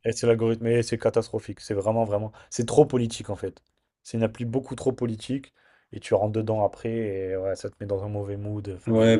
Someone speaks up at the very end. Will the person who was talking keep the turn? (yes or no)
no